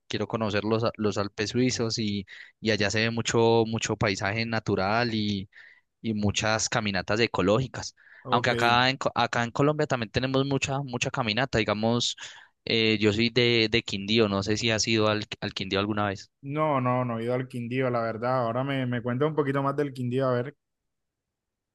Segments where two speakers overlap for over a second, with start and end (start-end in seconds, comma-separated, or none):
none